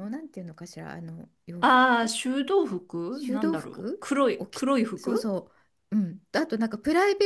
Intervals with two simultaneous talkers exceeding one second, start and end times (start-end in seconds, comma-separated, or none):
3.1-5.3